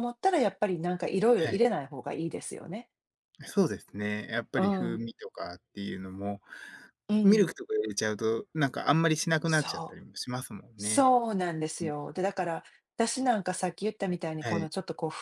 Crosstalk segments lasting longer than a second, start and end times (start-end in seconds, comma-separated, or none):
none